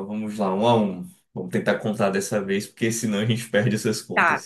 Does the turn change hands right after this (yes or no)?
yes